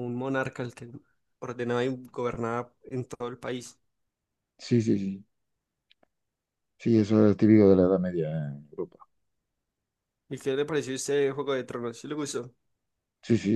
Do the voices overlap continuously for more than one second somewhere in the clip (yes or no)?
no